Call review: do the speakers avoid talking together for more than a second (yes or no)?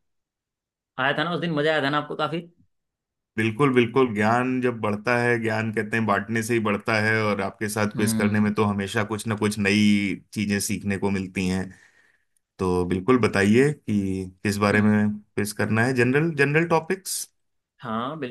yes